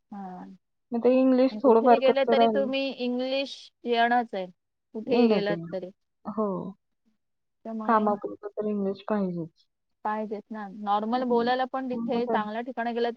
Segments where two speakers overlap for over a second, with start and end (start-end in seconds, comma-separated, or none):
0.9-2.7